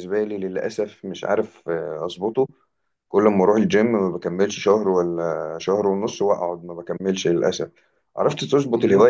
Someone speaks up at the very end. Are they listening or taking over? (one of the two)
listening